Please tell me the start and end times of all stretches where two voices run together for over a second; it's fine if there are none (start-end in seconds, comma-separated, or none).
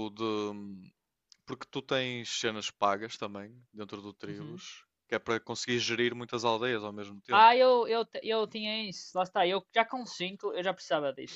none